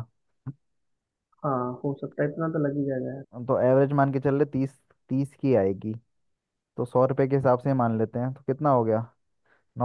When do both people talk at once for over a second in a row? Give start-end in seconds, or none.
none